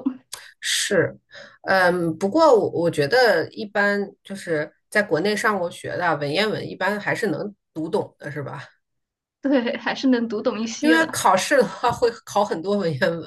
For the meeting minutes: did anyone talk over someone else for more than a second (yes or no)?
no